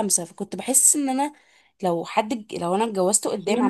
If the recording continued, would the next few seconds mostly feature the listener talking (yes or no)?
yes